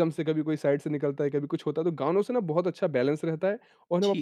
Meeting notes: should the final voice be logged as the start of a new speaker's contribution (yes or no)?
yes